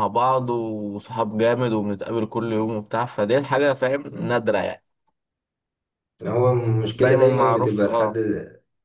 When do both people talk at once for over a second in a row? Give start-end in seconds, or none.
7.0-8.2